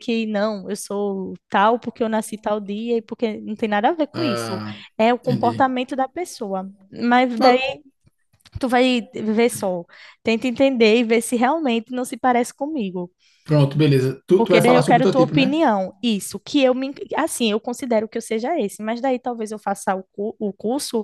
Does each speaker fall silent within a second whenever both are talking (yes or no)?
no